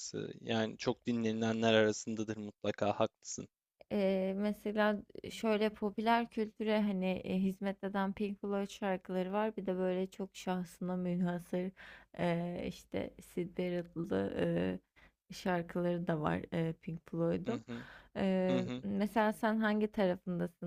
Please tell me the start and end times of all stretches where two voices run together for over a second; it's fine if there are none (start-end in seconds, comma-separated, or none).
none